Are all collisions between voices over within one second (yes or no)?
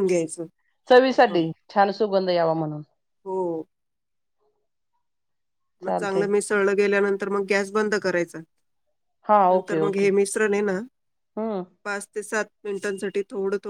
yes